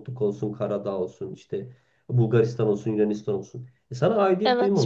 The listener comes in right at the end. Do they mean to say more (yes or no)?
no